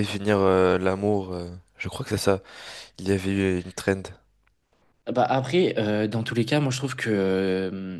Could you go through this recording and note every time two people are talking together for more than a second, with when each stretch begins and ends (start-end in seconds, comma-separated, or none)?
none